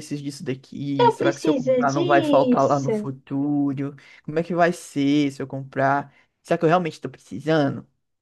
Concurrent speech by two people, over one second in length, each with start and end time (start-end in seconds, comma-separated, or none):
1.0-3.1